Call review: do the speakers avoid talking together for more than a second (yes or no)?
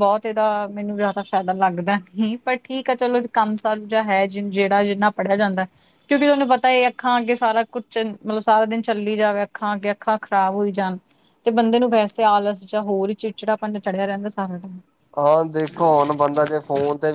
yes